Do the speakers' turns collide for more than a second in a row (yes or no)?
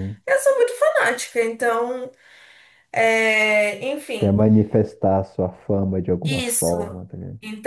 no